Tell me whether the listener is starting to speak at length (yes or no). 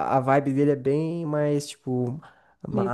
no